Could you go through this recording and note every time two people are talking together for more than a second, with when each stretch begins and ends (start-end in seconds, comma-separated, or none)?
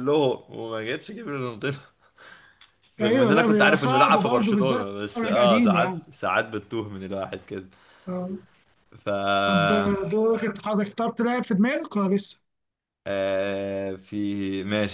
3.0-6.0